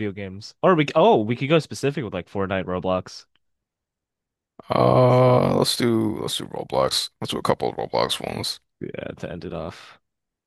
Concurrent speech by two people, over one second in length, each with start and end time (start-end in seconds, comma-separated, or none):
none